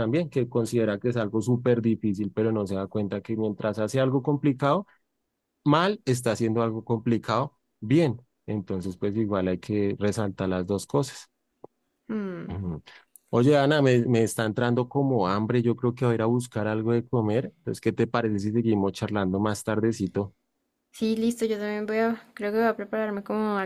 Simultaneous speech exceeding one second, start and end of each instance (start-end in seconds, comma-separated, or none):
none